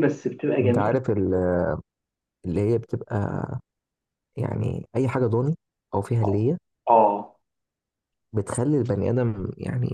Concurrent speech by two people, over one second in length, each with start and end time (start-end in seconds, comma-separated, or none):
none